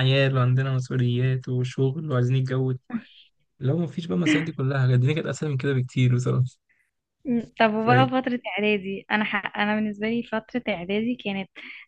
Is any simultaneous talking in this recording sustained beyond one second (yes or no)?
no